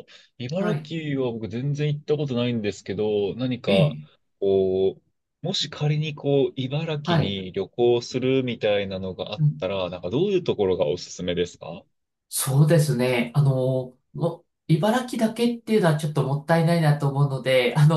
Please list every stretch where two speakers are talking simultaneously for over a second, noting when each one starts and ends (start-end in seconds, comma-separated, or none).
none